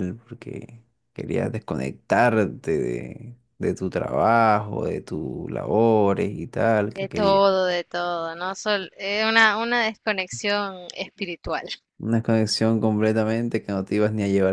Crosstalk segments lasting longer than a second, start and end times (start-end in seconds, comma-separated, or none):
none